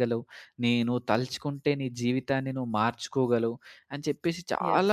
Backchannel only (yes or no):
yes